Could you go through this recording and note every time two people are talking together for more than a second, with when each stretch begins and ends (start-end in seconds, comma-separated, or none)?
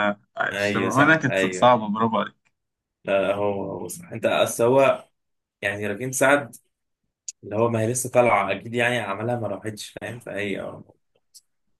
0.5-1.7